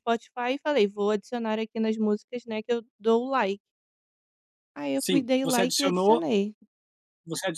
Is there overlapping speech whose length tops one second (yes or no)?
yes